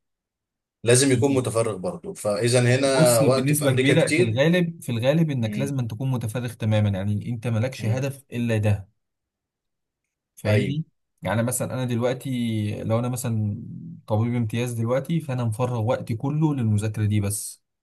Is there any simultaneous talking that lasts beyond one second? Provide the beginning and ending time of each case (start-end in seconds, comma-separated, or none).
2.9-4.4